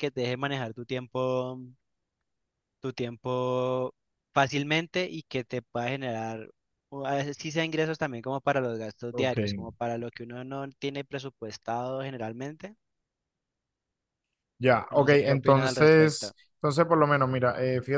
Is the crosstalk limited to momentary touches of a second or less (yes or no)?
no